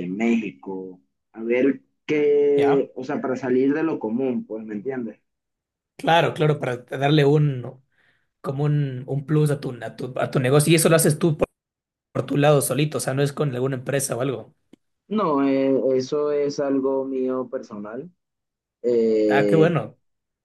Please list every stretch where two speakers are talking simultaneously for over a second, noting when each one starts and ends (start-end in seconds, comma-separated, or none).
none